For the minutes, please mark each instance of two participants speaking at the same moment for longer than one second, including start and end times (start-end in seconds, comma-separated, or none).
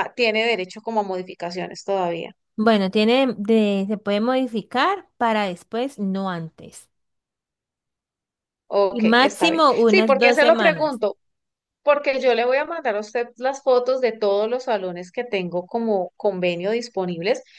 8.9-11.0